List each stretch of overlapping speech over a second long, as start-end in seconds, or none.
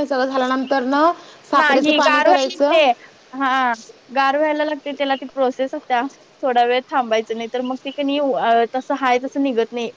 1.6-2.8